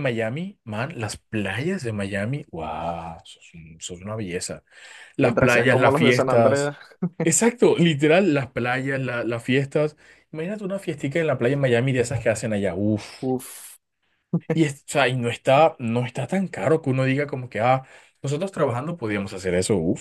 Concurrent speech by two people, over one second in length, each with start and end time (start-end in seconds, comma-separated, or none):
5.2-6.7